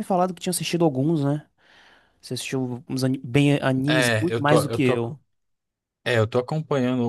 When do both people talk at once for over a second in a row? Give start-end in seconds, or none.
3.9-5.2